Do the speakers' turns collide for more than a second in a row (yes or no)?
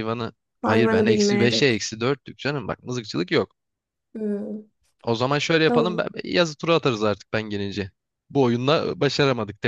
yes